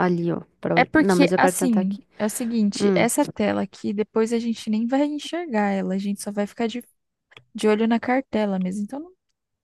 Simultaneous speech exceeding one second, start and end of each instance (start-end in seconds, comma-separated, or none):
0.7-2.1